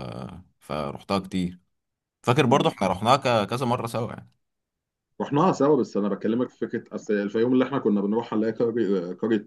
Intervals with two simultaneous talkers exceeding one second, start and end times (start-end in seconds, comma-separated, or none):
none